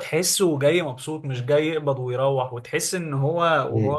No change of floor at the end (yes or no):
yes